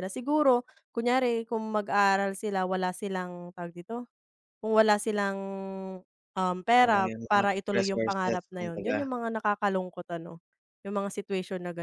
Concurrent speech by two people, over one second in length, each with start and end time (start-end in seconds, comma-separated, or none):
6.8-9.0